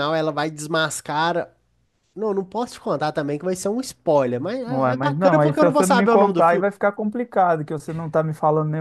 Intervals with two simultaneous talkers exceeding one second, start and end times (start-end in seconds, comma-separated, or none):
4.7-6.7